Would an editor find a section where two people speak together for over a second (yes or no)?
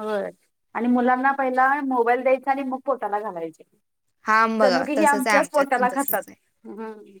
yes